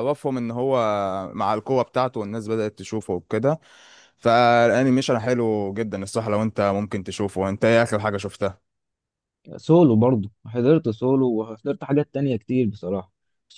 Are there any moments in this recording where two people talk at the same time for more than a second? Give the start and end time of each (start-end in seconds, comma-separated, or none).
none